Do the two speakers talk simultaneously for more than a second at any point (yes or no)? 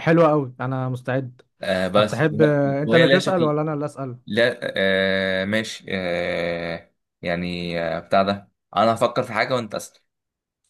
yes